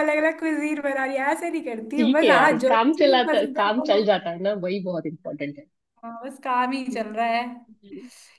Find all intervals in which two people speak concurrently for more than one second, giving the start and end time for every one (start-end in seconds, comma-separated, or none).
2.0-4.0